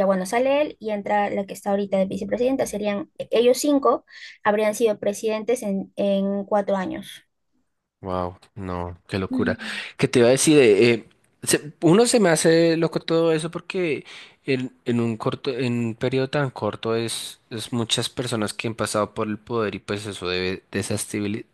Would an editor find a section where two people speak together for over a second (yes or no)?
no